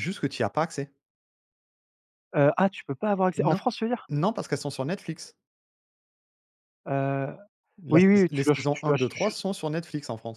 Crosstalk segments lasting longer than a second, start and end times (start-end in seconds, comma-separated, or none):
7.9-9.4